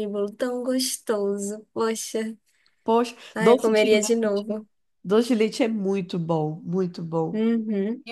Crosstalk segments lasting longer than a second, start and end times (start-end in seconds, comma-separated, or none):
3.3-4.6